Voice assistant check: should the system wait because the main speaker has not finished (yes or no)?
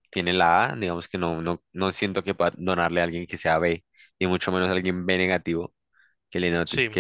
yes